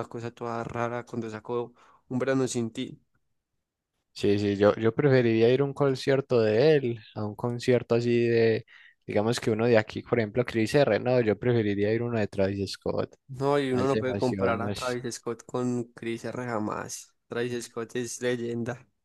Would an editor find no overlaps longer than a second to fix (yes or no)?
no